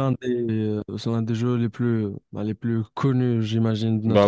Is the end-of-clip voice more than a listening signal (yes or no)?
yes